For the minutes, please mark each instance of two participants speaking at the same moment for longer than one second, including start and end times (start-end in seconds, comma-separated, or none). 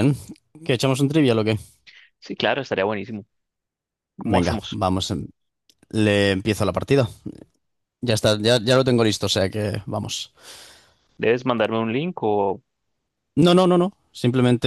none